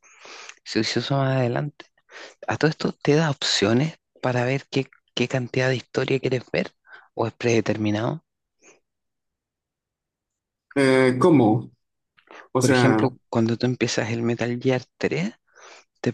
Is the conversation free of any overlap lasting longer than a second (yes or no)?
yes